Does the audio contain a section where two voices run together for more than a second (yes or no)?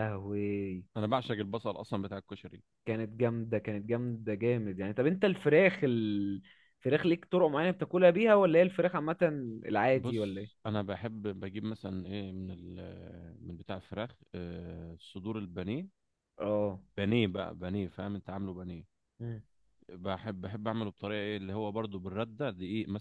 no